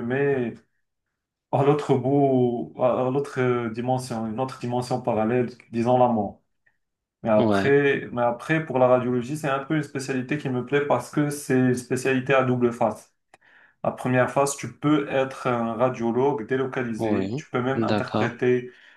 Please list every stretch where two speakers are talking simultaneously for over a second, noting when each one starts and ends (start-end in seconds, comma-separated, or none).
17.0-18.4